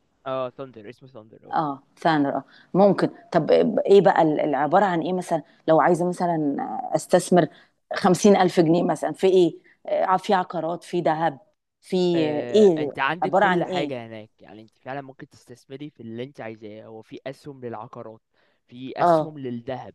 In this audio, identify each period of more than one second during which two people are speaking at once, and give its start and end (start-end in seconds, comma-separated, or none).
12.1-13.9